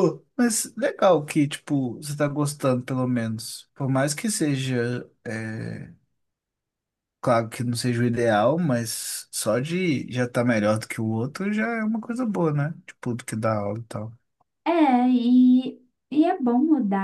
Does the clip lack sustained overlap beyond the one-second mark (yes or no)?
yes